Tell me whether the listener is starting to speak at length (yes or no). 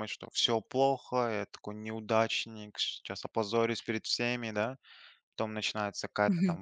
no